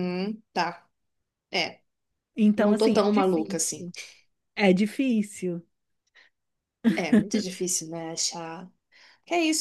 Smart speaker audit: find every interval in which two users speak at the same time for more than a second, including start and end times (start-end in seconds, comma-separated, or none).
2.5-3.9